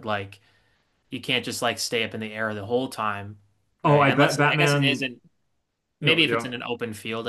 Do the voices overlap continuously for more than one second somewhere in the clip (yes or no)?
yes